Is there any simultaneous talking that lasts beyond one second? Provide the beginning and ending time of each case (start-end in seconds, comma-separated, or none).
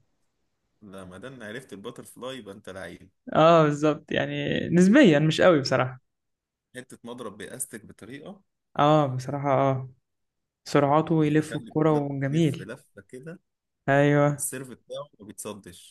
11.2-12.7